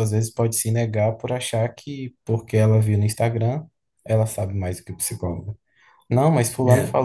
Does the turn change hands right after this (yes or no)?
no